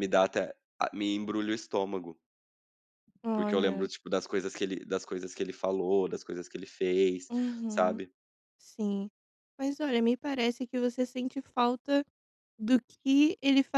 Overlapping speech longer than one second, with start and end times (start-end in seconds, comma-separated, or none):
none